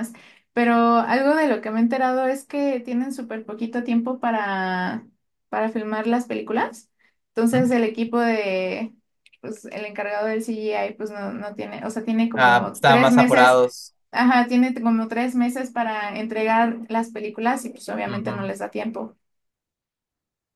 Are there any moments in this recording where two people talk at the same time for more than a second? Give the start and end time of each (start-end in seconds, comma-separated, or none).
12.3-13.6